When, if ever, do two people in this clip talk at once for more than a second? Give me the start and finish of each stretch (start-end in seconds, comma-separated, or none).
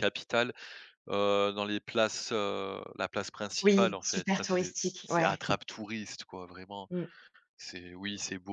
3.6-5.4